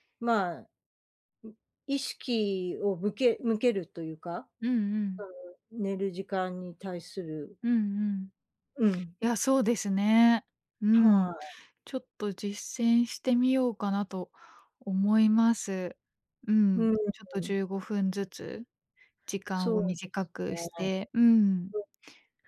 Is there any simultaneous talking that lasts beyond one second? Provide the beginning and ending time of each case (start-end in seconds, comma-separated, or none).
19.5-20.8